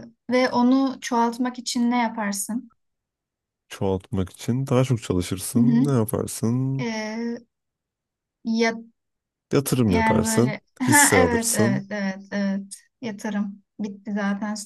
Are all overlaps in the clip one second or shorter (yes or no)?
no